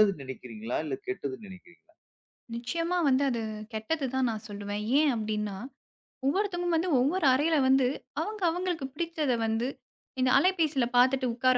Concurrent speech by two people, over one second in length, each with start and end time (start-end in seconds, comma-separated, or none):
none